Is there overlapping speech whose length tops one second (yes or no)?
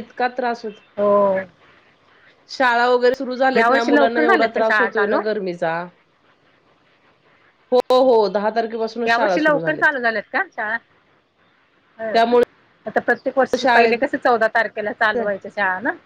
yes